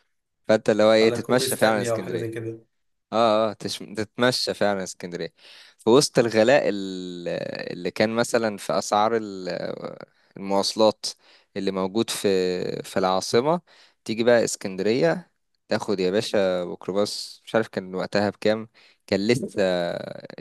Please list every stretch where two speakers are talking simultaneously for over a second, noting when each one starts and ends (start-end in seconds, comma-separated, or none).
1.0-2.5